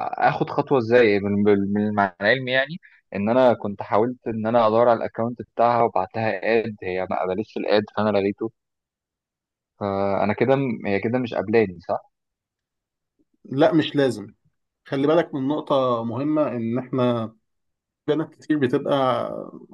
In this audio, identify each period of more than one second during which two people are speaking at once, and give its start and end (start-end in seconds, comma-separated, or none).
none